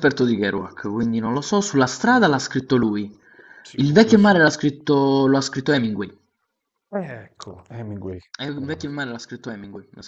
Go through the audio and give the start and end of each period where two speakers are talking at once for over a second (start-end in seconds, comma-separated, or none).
none